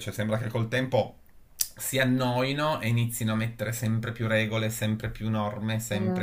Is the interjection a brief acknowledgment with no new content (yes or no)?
yes